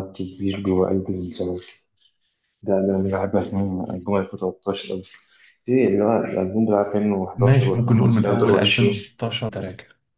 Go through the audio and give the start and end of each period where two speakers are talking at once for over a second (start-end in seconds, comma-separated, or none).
7.4-9.0